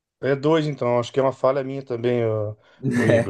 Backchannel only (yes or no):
yes